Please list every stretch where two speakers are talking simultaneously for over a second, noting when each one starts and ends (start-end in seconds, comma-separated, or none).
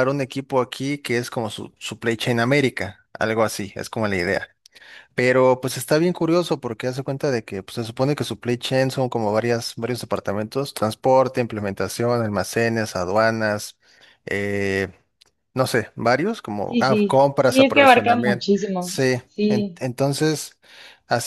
16.7-19.8